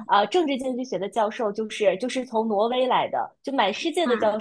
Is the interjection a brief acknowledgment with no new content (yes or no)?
yes